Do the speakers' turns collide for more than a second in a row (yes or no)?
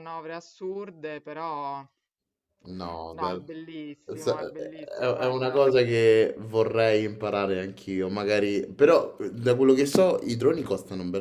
yes